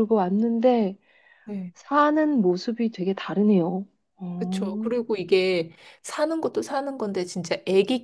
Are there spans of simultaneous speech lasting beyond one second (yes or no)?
no